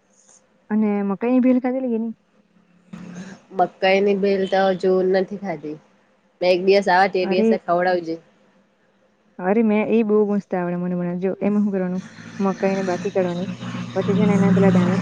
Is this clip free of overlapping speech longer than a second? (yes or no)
yes